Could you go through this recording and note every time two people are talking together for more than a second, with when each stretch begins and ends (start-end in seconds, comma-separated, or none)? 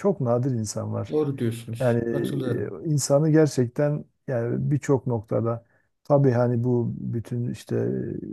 none